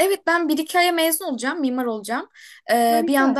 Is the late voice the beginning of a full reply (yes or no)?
no